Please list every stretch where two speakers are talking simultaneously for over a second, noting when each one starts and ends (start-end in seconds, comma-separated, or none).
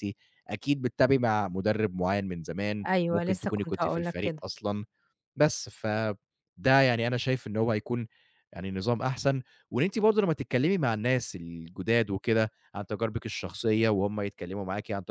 2.9-4.4